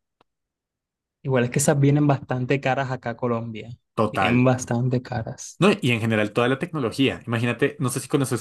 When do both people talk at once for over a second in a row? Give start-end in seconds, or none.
none